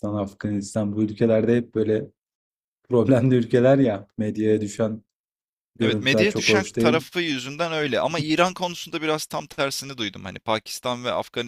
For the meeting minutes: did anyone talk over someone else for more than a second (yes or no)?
yes